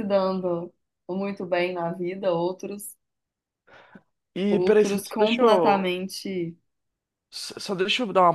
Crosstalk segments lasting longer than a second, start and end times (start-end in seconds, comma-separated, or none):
4.5-5.9